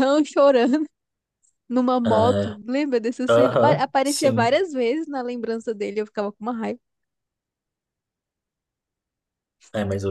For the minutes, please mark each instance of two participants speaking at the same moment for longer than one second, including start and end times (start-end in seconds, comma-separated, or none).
3.3-4.6